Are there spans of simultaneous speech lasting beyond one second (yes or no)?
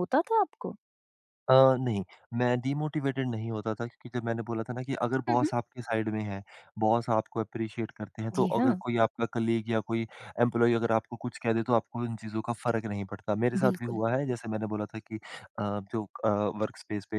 no